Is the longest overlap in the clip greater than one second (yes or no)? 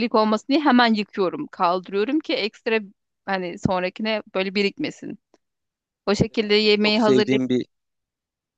yes